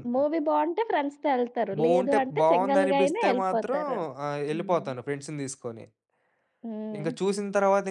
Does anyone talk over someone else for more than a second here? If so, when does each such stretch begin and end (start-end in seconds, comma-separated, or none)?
1.8-3.8